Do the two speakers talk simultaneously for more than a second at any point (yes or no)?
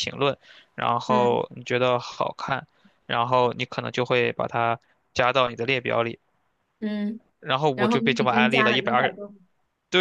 yes